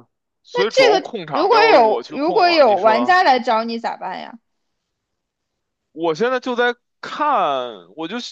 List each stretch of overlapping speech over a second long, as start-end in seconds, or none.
0.7-3.2